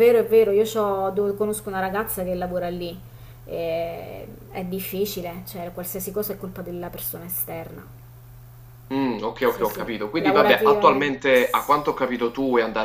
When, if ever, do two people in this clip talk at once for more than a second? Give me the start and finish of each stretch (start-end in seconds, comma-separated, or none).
9.5-11.2